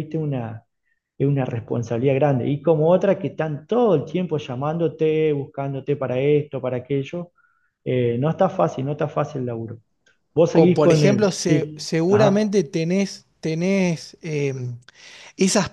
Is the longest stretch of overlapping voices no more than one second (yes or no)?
no